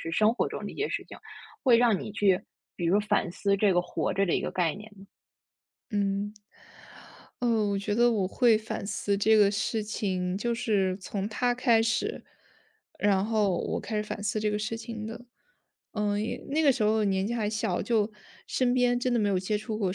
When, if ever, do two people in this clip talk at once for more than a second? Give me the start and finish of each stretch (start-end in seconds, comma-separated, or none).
none